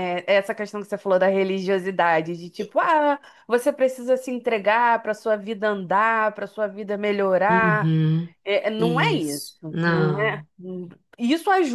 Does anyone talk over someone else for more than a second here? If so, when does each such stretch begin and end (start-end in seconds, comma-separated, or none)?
8.8-10.5